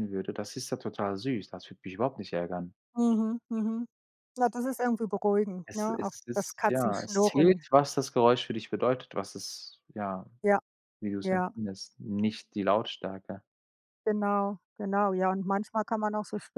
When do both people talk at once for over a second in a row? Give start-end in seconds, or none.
5.7-7.7